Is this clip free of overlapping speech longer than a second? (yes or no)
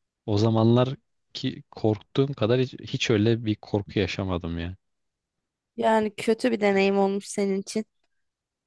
yes